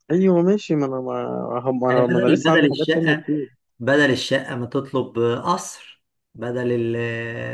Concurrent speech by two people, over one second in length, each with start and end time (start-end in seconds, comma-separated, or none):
1.9-3.2